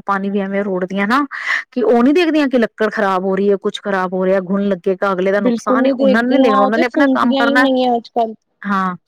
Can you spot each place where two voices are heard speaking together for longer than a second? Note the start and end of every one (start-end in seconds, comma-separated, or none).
5.5-7.7